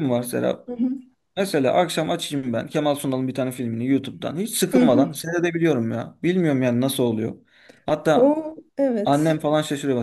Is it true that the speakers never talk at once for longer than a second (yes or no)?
yes